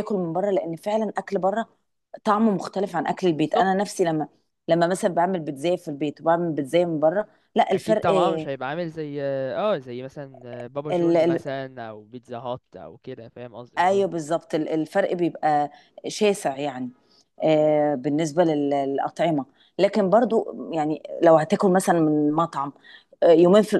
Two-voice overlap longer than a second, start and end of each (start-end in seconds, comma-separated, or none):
none